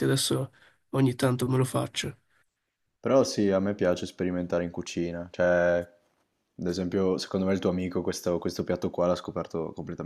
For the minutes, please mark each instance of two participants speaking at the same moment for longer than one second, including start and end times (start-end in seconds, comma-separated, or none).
none